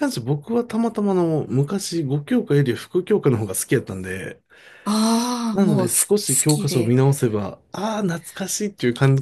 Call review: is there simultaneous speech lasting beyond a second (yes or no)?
yes